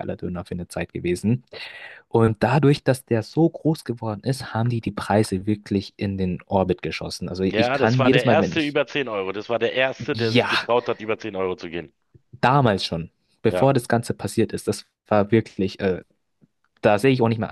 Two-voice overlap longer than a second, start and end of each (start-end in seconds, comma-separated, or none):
7.5-8.8